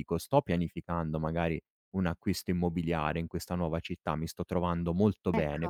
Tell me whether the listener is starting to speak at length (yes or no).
no